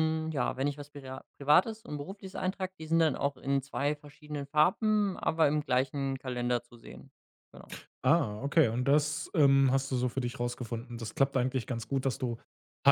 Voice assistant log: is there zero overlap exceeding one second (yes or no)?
yes